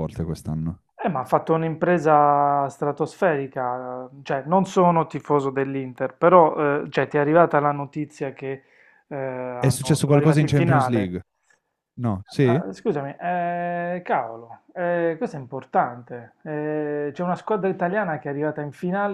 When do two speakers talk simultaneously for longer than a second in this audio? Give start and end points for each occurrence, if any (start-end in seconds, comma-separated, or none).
9.6-11.2